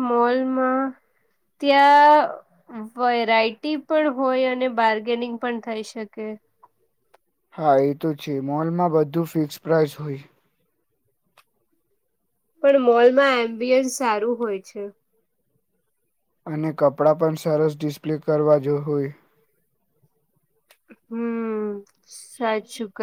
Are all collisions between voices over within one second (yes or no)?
yes